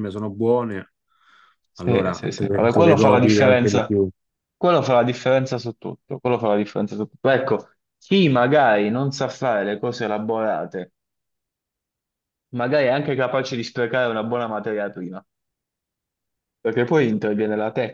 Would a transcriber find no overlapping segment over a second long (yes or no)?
no